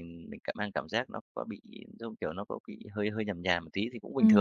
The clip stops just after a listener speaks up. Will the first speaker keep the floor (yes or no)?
no